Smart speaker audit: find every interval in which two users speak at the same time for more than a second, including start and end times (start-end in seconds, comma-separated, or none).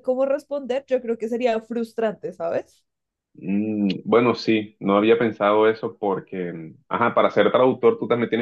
none